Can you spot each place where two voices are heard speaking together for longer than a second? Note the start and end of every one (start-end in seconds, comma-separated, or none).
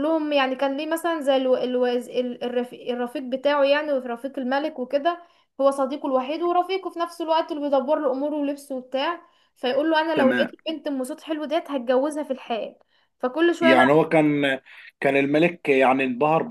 none